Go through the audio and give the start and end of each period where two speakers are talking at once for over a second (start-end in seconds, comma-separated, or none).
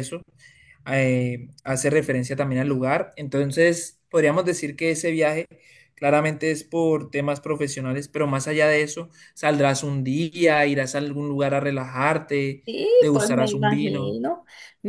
13.0-14.2